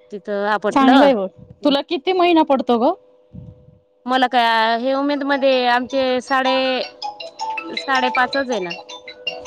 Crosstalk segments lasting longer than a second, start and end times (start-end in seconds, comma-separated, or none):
none